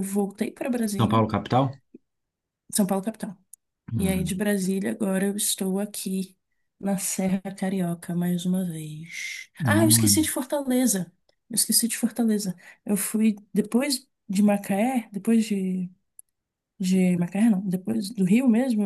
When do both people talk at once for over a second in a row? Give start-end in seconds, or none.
none